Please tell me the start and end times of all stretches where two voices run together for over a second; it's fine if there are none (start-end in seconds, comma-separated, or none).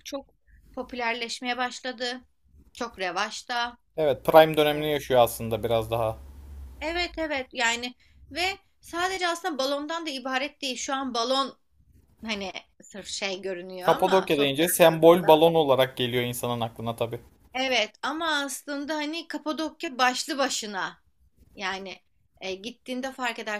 13.8-15.4